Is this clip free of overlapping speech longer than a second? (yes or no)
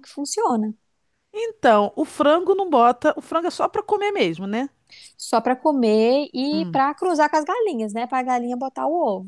yes